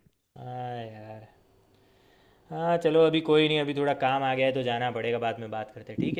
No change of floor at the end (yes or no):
no